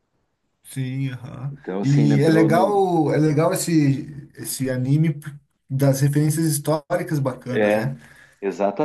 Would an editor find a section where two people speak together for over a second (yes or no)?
yes